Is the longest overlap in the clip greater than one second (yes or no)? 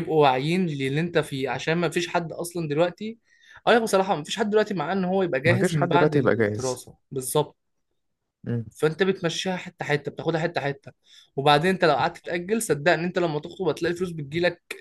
yes